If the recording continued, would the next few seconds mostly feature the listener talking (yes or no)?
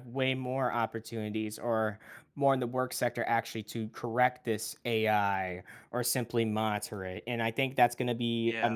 no